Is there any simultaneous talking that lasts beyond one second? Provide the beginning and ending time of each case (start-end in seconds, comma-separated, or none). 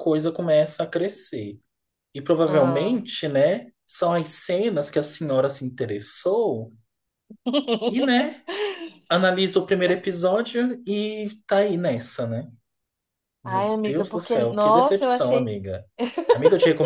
13.4-15.5